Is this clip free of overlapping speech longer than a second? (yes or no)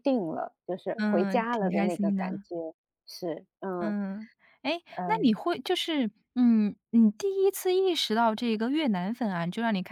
no